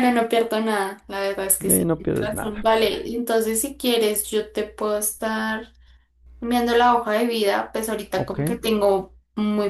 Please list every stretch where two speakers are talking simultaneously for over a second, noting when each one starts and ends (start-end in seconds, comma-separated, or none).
1.7-3.1